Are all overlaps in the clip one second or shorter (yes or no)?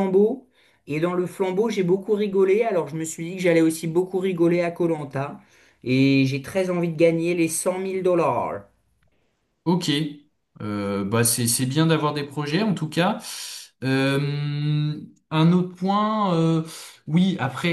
yes